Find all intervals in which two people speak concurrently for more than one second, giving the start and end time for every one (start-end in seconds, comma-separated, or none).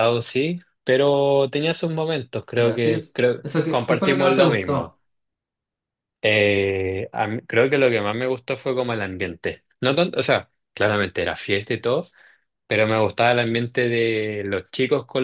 2.5-5.0